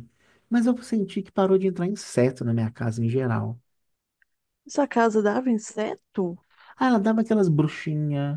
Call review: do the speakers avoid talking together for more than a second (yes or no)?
yes